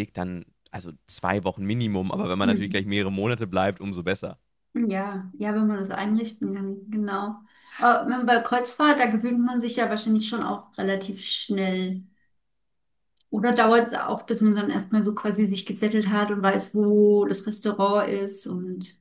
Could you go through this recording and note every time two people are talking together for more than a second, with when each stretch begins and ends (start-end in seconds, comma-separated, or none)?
none